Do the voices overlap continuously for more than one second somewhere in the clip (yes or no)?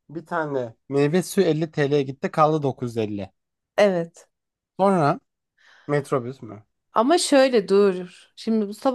no